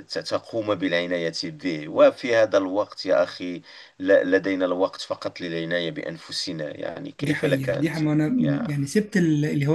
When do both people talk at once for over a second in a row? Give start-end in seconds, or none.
7.2-8.7